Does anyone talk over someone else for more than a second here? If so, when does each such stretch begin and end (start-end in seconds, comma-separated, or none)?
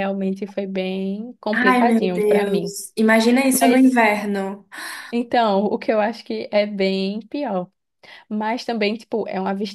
1.5-2.8